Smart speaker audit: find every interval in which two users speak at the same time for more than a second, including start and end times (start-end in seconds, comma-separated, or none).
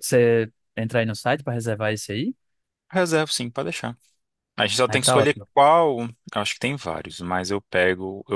none